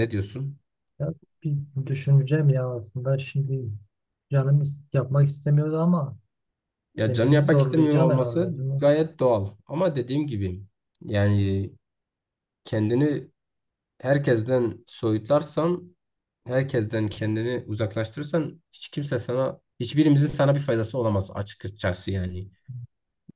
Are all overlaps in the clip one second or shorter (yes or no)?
no